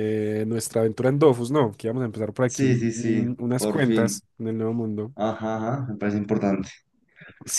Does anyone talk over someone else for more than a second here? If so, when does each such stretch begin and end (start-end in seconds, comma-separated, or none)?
2.5-4.2